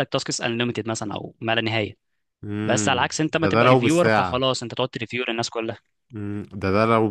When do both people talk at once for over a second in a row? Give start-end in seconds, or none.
2.6-4.5